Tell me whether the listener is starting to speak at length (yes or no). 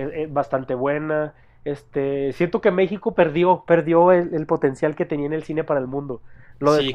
yes